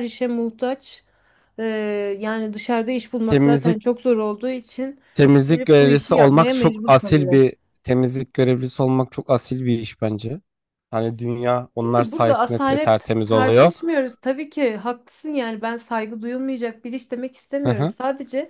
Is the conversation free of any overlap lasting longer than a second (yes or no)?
no